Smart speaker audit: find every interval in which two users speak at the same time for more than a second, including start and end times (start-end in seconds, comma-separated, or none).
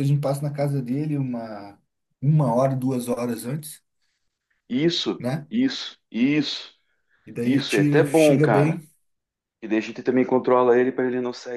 7.4-8.8